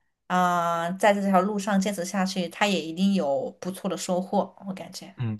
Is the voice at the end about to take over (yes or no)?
yes